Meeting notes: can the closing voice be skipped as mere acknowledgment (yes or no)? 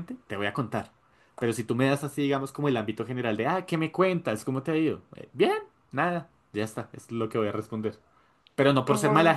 yes